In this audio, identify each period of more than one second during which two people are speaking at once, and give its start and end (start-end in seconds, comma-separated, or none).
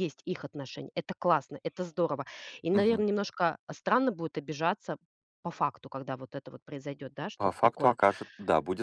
none